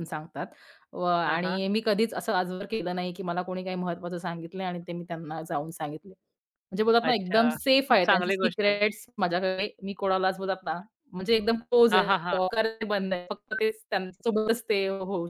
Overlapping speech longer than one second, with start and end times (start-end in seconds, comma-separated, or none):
7.0-8.8